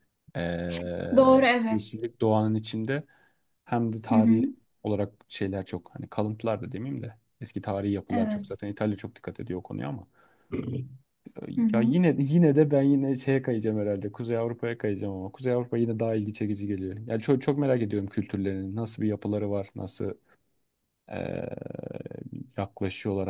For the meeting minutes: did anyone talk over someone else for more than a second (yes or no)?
no